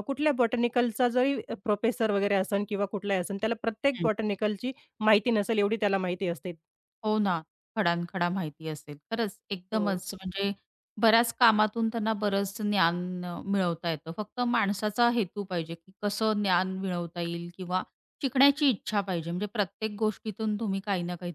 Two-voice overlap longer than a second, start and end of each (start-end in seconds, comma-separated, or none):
none